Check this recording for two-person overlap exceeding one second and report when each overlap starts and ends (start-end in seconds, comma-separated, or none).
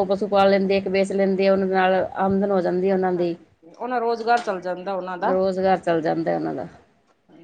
none